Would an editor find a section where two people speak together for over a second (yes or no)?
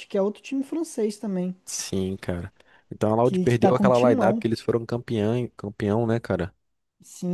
yes